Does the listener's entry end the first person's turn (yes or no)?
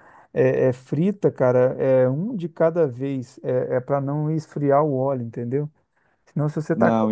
no